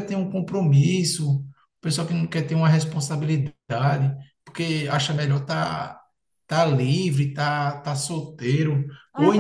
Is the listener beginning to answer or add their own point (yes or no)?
yes